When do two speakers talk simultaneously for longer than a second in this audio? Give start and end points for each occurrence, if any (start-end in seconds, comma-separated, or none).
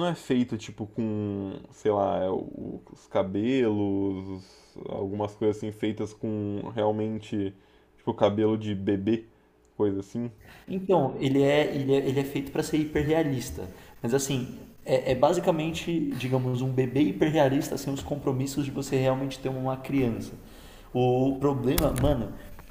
none